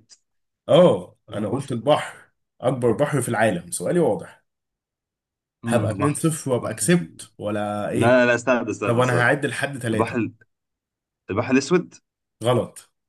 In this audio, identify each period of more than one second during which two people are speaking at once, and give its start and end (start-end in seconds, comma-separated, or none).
5.7-7.2